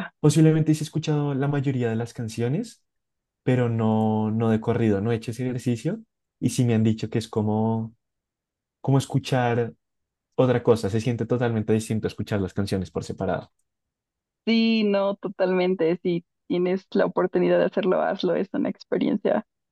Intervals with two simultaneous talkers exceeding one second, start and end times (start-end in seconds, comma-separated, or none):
none